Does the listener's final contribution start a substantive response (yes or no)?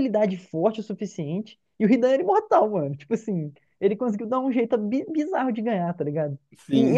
no